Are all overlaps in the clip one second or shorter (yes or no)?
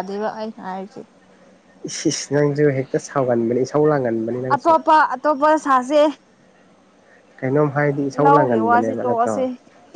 no